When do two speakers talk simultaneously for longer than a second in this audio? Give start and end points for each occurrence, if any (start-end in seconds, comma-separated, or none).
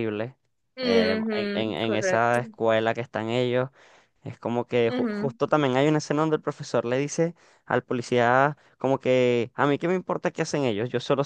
0.8-2.4